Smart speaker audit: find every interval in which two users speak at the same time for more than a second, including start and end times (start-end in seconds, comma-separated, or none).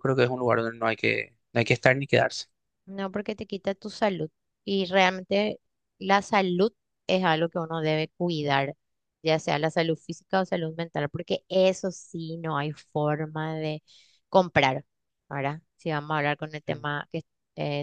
none